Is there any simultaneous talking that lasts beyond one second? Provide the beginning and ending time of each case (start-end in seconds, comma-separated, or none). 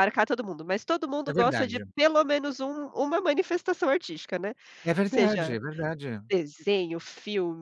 none